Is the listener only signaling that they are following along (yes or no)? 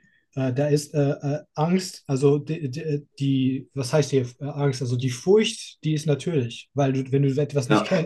yes